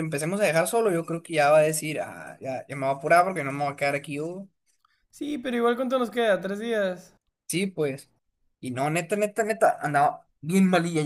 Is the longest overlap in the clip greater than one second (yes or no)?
no